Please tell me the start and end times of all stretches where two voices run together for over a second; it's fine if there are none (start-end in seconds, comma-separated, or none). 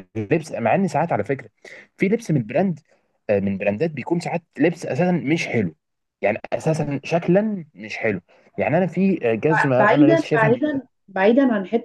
9.5-10.8